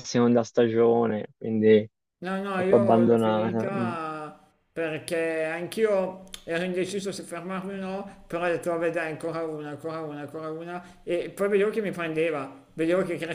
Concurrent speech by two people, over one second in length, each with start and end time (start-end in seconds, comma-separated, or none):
2.5-3.9